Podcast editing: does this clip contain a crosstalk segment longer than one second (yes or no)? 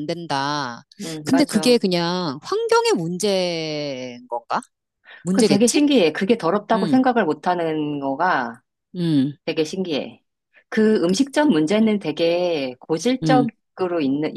no